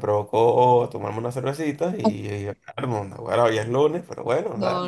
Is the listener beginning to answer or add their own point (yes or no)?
yes